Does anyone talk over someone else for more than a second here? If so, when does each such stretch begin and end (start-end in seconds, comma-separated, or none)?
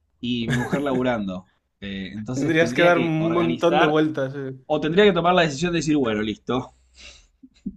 2.3-4.0